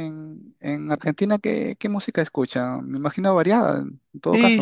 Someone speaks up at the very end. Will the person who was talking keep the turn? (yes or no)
no